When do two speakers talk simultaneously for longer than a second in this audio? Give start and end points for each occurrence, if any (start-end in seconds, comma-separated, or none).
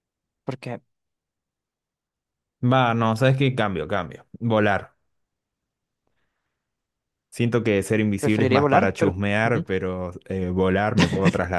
8.2-9.6